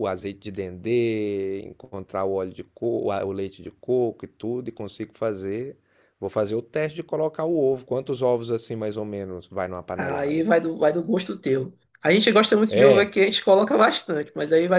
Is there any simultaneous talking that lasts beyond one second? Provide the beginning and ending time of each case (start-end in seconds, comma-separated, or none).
none